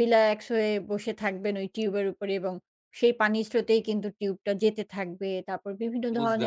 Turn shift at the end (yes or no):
no